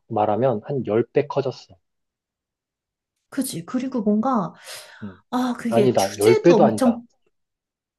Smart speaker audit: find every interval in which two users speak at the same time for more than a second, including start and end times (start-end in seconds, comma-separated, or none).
5.7-7.0